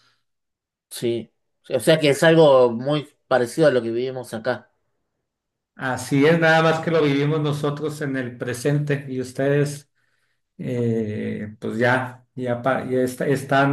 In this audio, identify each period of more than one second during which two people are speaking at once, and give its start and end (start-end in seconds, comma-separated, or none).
none